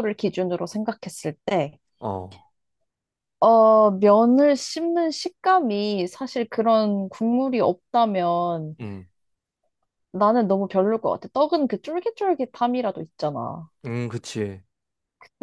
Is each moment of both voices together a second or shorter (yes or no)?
yes